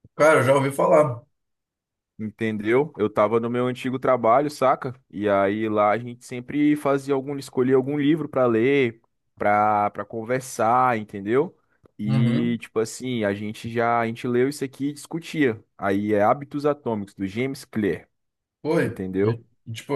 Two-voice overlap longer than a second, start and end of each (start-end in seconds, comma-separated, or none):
none